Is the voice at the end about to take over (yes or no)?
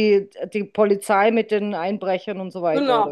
yes